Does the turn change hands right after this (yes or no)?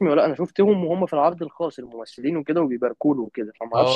yes